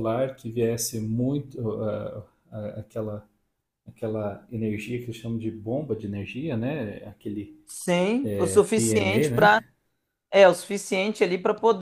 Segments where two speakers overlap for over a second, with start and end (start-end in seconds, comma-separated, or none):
8.2-9.6